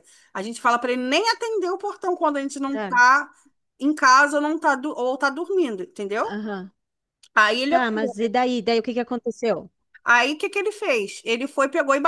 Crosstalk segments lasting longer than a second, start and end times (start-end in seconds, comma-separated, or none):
none